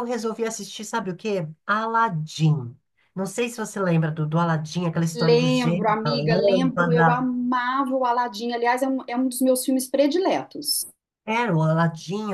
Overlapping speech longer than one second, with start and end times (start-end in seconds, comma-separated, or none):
5.2-7.2